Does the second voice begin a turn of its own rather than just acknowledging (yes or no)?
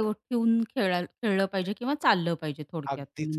yes